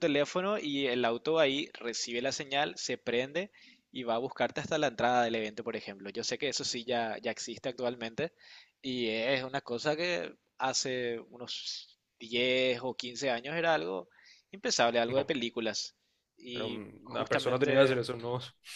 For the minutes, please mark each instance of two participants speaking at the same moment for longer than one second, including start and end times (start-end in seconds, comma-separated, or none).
16.5-18.0